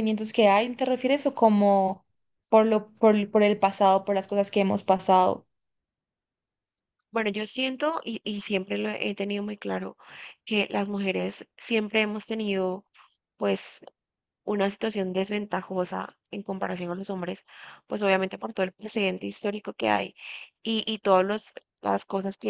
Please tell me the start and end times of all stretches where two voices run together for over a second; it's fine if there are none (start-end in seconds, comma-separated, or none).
none